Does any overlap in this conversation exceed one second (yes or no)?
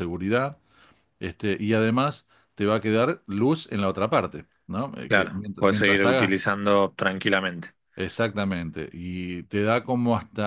yes